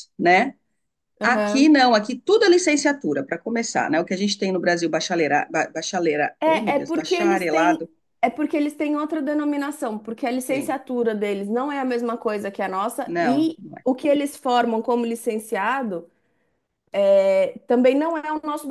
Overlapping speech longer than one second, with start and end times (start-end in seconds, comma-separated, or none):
6.4-7.8